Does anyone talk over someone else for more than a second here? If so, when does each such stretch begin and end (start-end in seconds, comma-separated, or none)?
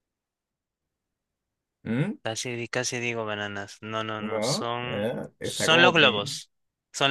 4.2-6.2